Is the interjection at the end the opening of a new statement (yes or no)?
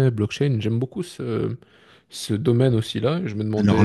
no